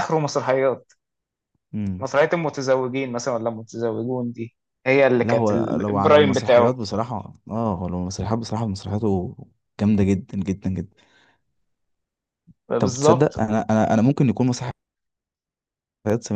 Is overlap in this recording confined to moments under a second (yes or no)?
no